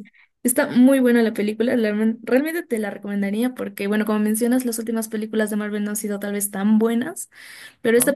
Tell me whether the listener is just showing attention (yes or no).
yes